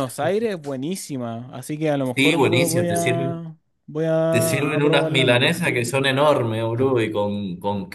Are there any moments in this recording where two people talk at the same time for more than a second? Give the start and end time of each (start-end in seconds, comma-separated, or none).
2.1-3.4, 4.3-5.5